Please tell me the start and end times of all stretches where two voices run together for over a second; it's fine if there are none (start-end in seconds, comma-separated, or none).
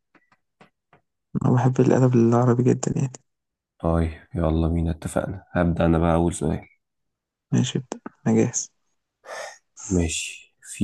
none